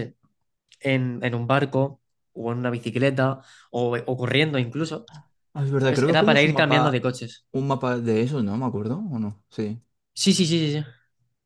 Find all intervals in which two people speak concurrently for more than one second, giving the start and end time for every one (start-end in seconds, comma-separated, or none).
5.8-7.1